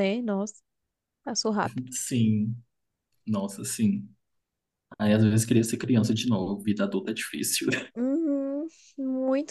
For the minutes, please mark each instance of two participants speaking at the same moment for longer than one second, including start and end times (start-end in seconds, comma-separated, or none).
none